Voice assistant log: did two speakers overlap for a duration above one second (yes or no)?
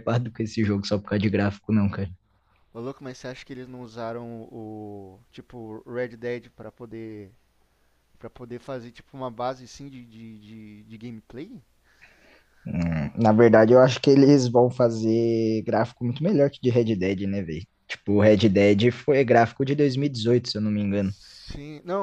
no